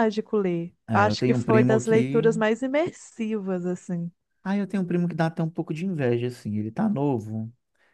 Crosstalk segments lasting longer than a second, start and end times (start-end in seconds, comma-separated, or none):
0.9-2.2